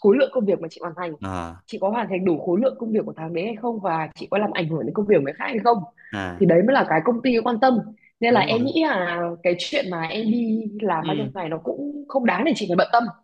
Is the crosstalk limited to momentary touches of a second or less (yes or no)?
yes